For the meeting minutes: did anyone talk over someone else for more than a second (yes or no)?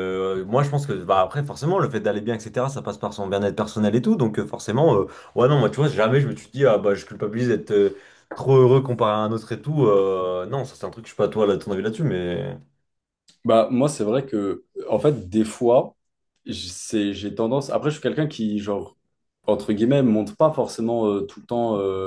no